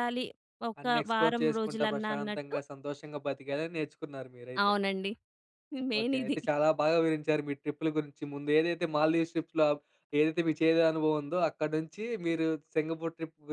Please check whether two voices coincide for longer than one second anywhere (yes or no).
yes